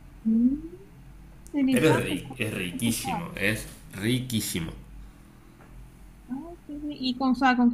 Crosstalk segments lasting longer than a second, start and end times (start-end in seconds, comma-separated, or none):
1.7-3.2